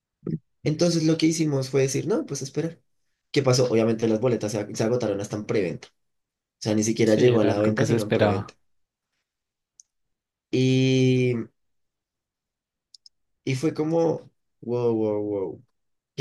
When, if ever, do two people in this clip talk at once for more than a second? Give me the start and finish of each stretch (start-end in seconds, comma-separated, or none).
7.0-8.5